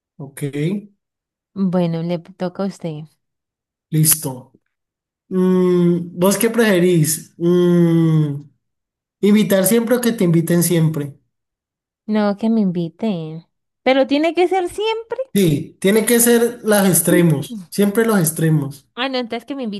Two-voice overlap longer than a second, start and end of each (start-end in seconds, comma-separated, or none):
none